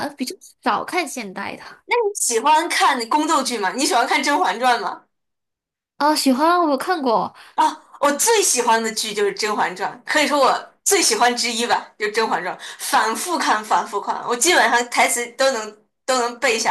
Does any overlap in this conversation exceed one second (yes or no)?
no